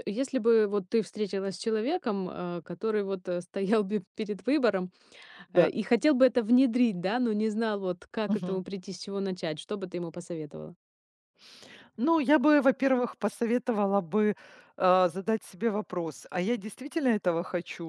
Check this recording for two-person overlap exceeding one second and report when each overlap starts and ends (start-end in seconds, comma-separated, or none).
none